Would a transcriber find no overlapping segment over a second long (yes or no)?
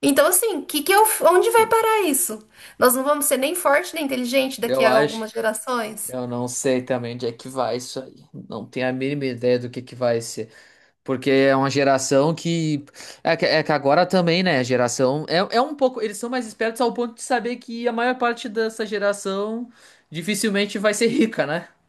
yes